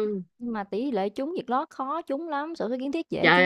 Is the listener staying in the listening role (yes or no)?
no